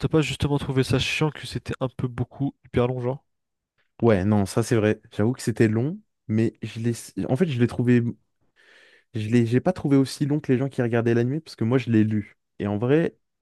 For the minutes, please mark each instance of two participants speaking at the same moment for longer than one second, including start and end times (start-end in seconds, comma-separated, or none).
none